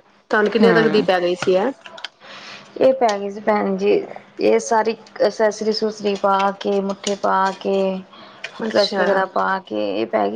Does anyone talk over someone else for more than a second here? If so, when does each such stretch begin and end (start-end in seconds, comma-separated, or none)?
none